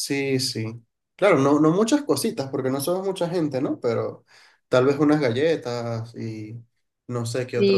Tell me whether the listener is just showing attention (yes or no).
no